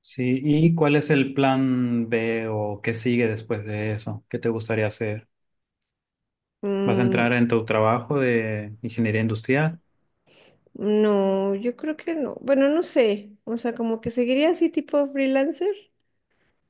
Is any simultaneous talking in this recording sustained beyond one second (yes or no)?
no